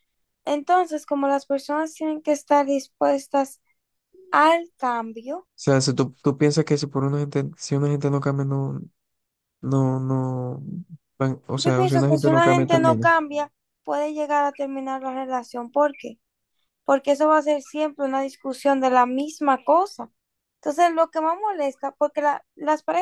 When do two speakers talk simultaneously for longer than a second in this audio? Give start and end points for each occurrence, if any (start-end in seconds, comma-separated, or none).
11.6-13.1